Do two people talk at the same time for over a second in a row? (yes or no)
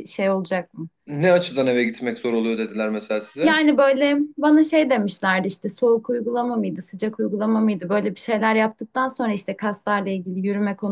no